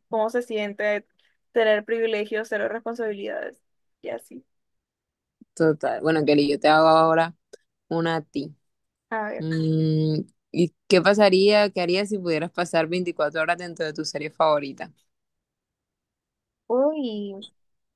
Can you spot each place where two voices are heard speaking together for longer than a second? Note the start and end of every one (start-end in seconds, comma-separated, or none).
none